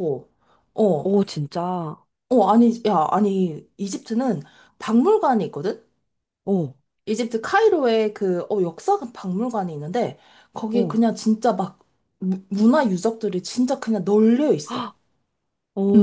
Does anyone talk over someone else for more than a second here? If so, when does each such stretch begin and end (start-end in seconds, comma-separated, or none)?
none